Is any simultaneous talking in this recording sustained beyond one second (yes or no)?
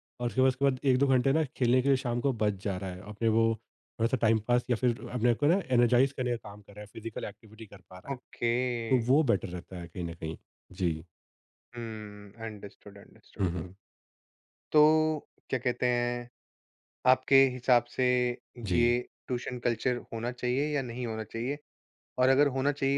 no